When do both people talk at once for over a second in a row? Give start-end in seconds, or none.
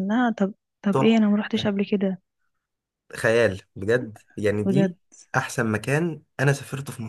none